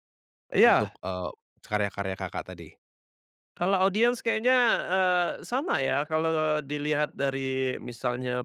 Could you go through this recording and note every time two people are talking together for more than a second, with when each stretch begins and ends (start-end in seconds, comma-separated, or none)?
none